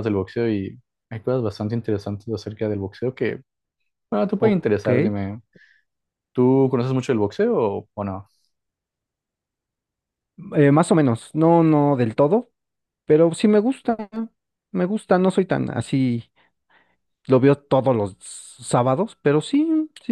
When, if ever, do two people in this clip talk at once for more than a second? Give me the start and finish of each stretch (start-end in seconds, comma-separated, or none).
none